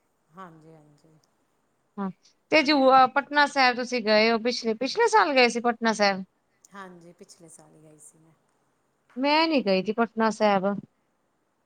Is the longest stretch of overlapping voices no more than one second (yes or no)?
yes